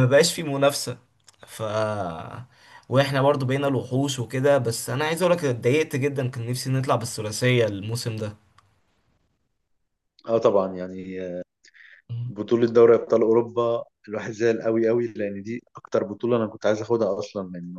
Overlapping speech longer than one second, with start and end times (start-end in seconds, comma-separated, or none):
none